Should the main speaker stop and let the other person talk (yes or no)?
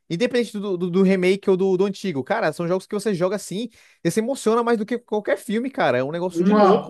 yes